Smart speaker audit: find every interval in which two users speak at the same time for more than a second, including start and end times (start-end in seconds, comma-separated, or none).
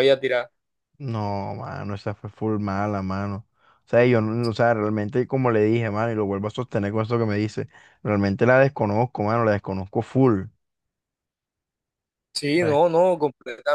none